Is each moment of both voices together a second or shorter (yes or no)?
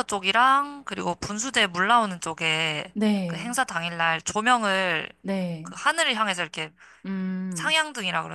yes